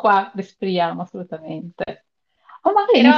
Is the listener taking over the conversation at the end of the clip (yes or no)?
no